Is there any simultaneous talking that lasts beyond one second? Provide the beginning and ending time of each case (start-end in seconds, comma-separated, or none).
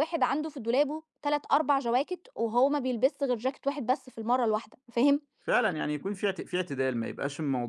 none